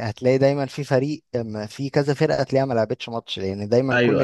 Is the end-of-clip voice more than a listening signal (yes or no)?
no